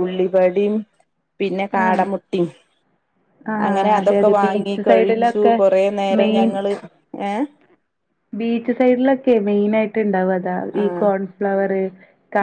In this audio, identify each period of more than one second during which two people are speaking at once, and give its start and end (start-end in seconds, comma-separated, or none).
3.7-5.6